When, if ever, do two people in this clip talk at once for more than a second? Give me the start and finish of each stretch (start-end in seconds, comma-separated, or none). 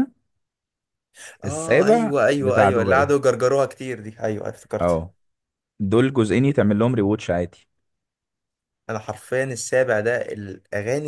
1.4-3.1